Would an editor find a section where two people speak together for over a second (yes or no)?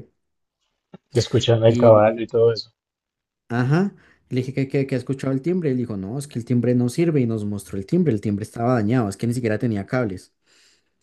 no